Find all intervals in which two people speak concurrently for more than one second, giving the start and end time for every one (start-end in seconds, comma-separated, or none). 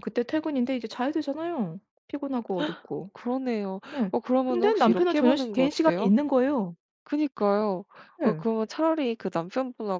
4.0-6.1